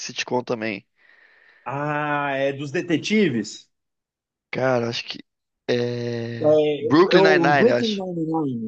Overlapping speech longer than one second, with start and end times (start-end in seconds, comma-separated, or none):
6.4-8.0